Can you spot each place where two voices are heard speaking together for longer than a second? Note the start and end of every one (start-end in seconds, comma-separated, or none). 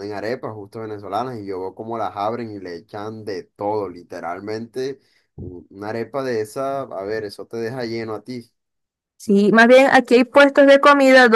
none